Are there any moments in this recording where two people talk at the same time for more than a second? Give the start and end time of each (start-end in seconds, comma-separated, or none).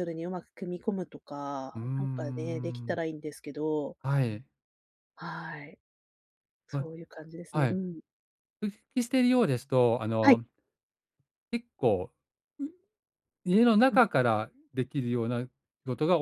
1.7-3.0